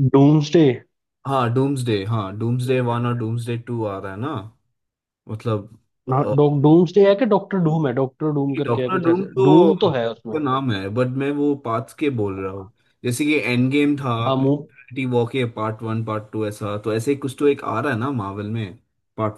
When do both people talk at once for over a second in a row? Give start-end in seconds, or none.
8.7-10.4